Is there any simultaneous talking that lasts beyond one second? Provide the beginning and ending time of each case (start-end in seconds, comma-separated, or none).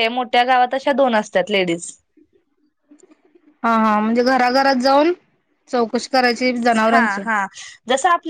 none